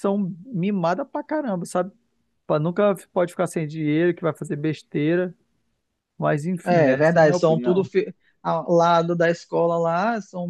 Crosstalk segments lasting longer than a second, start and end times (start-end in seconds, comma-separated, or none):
6.7-7.9